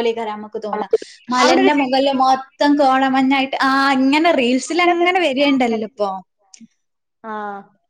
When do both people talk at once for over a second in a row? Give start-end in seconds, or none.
4.7-6.1